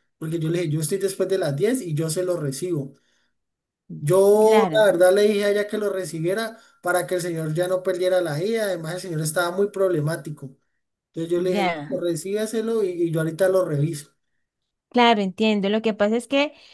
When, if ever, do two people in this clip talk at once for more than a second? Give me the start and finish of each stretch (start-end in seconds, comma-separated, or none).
none